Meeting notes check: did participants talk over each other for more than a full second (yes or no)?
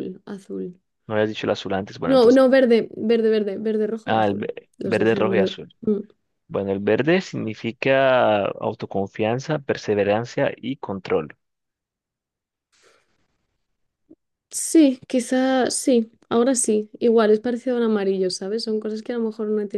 yes